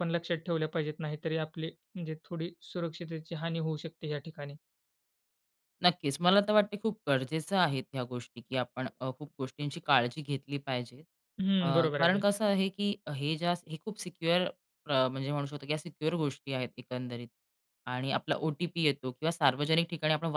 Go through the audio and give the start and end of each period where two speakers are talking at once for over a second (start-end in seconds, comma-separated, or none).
none